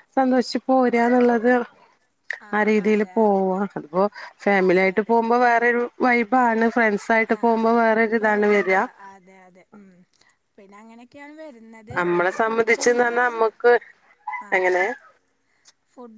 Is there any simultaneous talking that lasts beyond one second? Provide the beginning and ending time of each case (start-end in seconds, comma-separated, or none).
12.0-13.5